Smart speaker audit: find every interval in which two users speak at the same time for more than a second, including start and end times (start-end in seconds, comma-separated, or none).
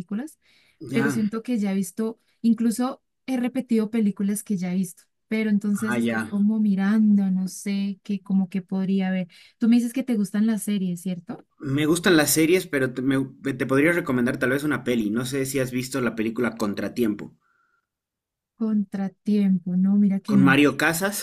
none